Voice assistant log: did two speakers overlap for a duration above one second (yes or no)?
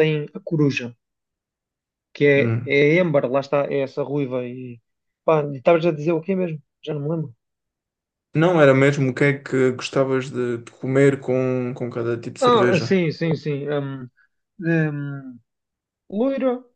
no